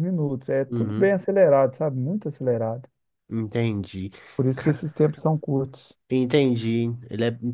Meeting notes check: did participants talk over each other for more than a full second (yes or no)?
no